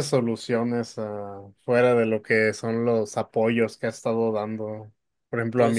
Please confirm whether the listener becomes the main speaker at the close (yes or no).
no